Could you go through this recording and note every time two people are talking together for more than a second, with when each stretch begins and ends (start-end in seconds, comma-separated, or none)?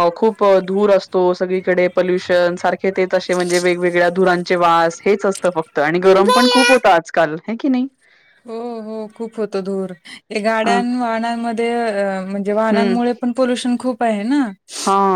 none